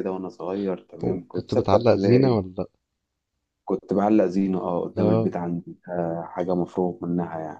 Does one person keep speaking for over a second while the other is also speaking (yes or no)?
yes